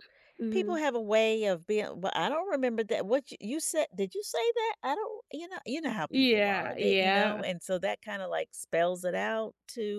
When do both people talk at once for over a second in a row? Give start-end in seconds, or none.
6.1-7.4